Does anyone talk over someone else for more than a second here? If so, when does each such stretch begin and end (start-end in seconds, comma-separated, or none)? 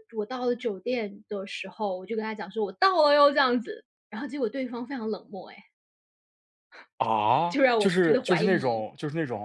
7.5-8.8